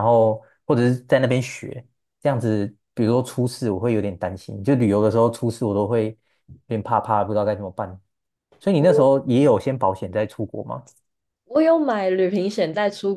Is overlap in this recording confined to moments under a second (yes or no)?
yes